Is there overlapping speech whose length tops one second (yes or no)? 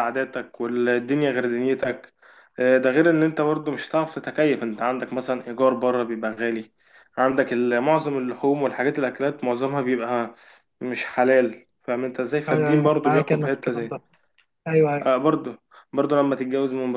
yes